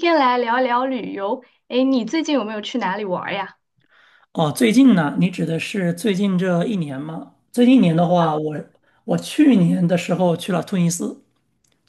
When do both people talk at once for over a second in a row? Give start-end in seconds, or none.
none